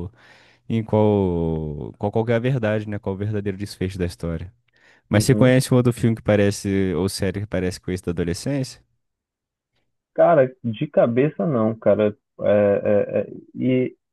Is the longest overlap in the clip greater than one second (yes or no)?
no